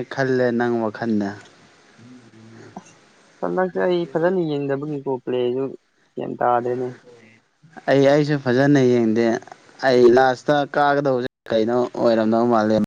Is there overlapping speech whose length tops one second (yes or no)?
no